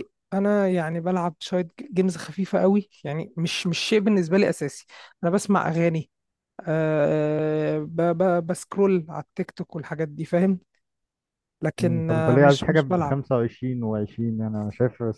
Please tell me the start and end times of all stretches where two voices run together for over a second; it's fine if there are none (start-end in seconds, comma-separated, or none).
11.8-13.2